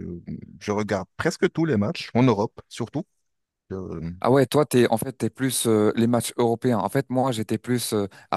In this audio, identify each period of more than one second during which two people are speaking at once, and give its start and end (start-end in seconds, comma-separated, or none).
none